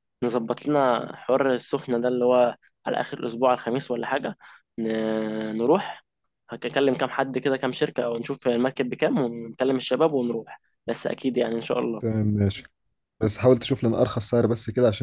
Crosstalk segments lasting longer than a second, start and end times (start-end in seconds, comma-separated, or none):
none